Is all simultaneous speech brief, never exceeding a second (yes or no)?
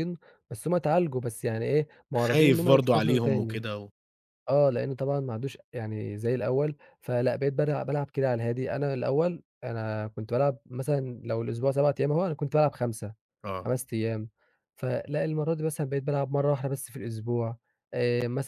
no